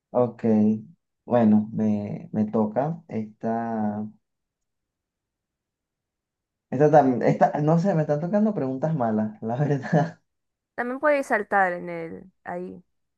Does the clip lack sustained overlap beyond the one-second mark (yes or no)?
yes